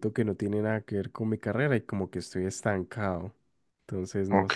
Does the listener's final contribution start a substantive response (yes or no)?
yes